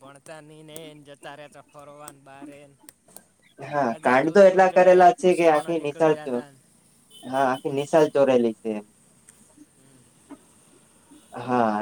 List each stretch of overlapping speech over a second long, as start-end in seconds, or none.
3.8-6.4